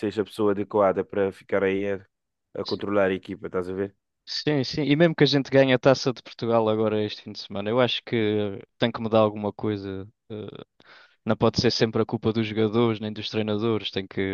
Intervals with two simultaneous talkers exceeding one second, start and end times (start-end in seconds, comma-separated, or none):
none